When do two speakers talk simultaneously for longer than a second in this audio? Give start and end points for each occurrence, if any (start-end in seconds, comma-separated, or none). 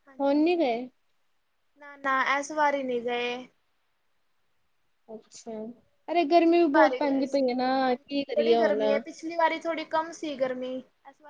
6.3-8.8